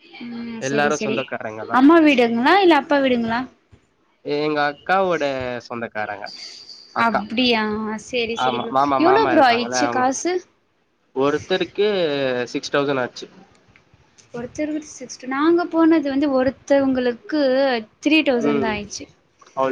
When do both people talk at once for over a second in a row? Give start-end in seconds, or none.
none